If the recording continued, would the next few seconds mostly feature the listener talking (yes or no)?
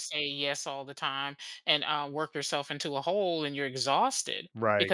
no